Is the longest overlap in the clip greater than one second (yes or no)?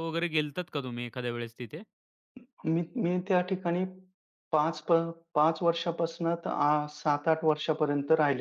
no